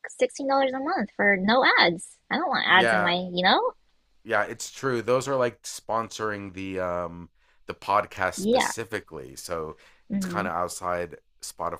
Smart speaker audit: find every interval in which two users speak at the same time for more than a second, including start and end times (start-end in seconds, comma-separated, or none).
none